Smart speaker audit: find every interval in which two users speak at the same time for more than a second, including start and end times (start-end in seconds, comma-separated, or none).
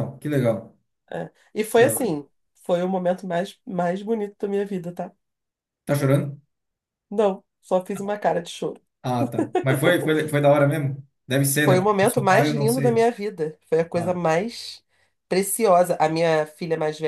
11.6-13.0